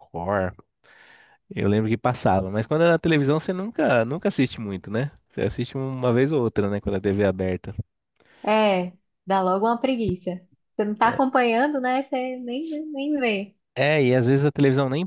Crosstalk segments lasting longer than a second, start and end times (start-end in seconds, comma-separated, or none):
none